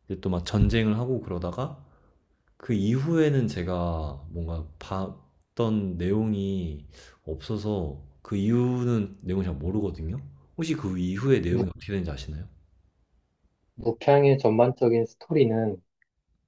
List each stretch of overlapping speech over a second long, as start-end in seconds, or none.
none